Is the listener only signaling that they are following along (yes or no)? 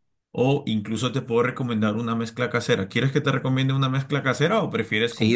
no